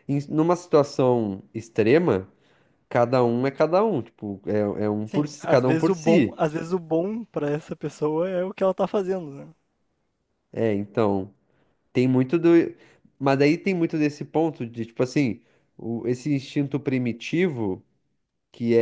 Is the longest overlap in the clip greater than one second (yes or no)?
yes